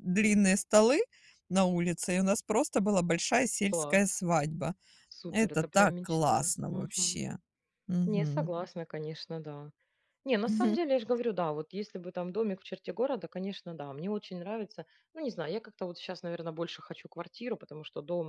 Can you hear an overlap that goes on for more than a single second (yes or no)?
yes